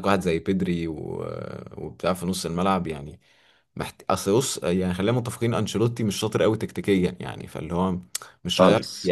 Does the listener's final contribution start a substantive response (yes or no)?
no